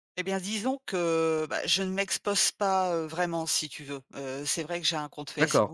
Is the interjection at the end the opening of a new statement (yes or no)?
no